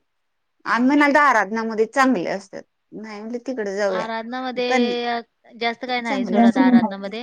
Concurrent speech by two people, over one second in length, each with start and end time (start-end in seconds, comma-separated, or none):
none